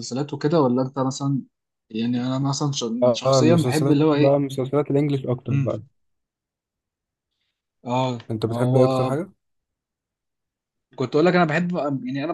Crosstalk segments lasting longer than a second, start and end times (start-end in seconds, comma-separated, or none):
3.0-4.4